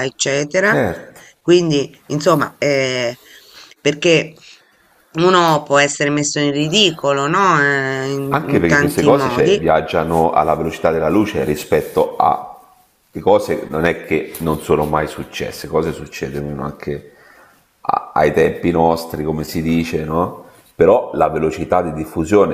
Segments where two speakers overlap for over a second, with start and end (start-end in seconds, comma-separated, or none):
8.3-9.6